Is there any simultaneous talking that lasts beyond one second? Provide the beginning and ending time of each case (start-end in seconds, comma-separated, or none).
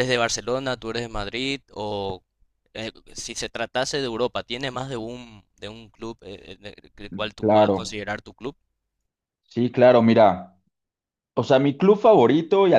none